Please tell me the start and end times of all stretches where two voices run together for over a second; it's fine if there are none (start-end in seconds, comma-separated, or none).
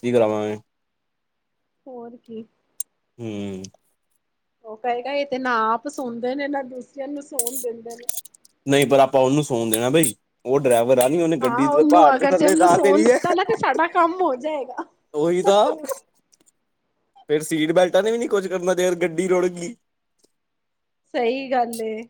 11.4-13.2